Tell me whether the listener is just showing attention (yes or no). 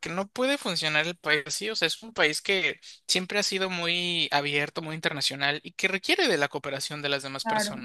no